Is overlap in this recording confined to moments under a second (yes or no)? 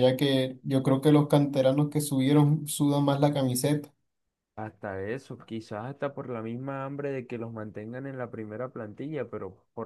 yes